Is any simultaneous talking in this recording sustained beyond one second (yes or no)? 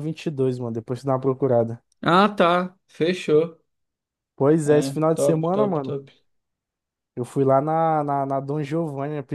yes